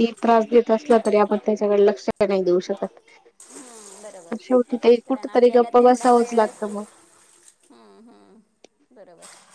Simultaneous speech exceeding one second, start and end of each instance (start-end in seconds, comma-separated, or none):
5.0-6.8